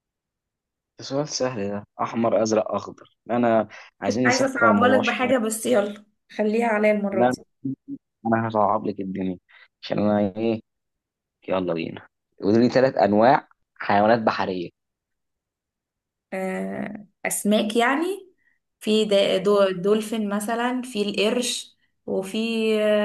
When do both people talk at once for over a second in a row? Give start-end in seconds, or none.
4.0-5.3